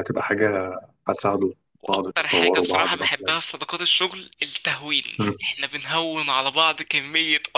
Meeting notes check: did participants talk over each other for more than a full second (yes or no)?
yes